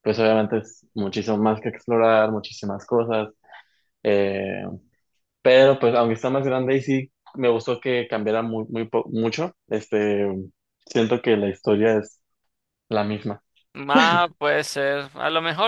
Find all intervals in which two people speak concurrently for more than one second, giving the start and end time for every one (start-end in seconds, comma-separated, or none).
none